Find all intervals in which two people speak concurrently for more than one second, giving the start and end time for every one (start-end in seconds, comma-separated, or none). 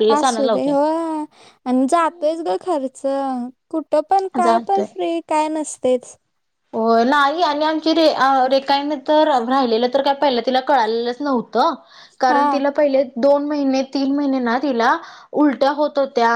none